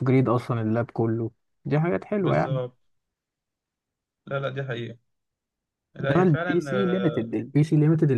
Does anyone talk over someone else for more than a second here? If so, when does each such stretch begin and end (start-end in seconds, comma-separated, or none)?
6.0-7.4